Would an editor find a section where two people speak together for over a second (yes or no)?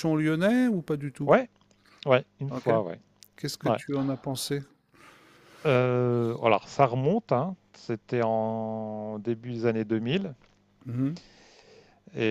no